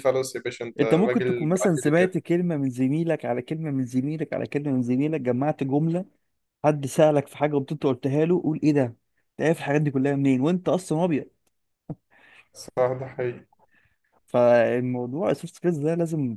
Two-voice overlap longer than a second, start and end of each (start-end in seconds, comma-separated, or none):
0.8-2.1